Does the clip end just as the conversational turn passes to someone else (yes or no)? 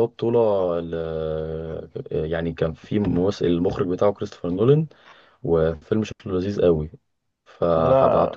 no